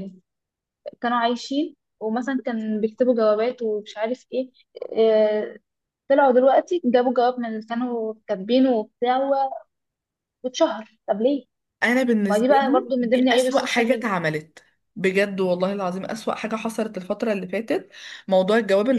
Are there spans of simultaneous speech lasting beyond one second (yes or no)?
yes